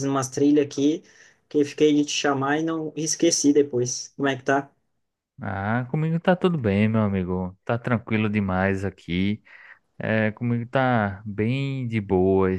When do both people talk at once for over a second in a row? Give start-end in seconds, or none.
none